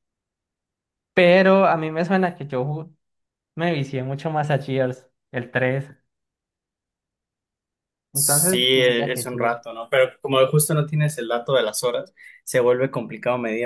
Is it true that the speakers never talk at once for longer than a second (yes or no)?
no